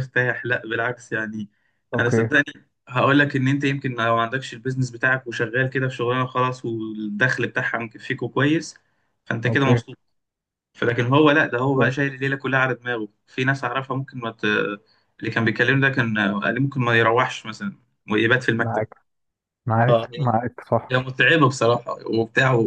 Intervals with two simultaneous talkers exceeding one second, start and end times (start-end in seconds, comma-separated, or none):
none